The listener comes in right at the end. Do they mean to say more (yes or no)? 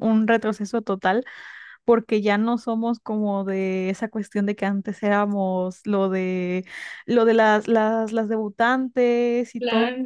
no